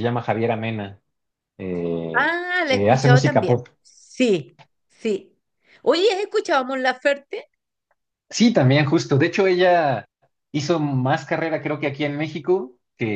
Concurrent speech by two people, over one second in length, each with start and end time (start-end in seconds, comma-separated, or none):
2.1-3.7